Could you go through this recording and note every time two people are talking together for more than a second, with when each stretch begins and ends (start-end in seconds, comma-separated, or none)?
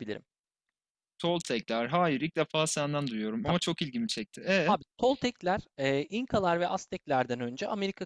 none